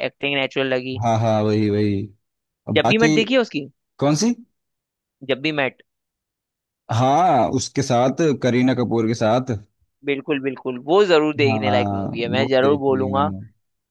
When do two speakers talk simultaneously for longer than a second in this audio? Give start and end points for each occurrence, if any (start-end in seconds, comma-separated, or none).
11.5-13.3